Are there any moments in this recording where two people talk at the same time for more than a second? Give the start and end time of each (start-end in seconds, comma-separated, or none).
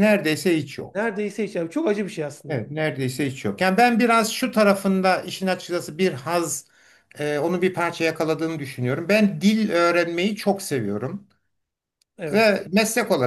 none